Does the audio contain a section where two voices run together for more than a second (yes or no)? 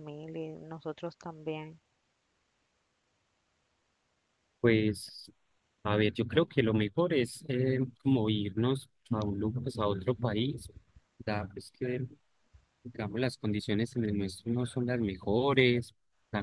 no